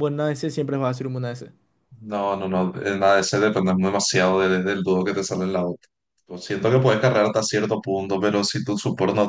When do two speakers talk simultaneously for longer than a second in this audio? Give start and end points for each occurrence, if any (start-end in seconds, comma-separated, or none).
none